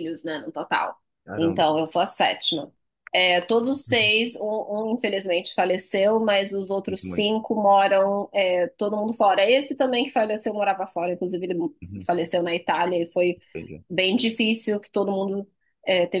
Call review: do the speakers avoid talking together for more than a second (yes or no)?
yes